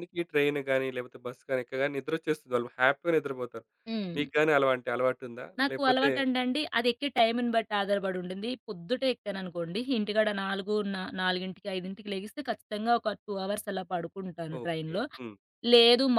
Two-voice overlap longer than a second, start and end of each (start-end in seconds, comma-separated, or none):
none